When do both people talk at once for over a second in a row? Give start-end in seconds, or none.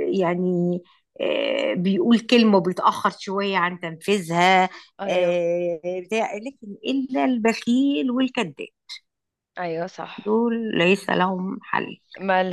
none